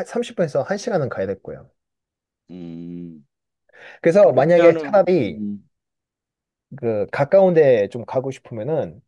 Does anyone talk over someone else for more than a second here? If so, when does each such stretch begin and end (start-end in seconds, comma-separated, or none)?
4.2-5.4